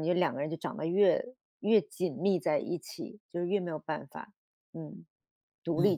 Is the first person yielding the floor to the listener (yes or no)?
yes